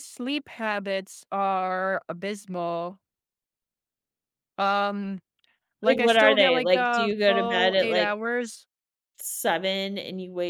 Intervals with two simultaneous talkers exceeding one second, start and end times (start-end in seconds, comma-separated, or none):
5.8-8.1